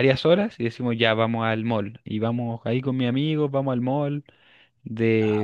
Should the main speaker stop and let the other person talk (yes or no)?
no